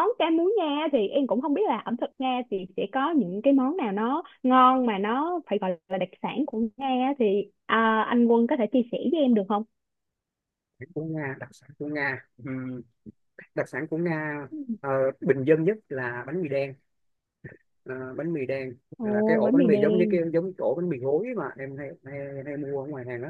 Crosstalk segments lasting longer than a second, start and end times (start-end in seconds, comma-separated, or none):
19.0-20.2